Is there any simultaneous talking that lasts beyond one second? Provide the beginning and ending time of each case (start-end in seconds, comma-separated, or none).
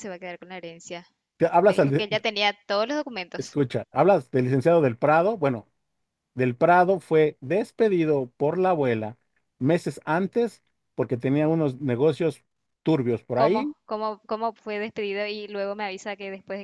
none